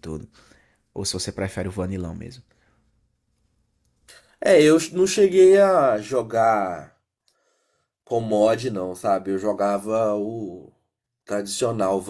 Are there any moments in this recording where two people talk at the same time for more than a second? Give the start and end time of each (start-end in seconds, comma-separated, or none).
none